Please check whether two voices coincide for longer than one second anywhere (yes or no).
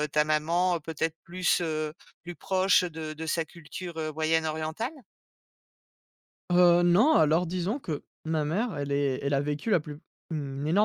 no